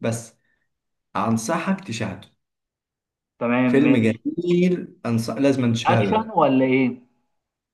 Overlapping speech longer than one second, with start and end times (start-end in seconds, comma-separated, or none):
none